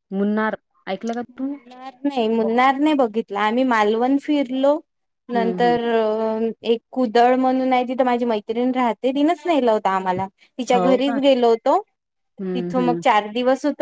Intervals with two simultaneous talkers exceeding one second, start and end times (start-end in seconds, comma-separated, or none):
none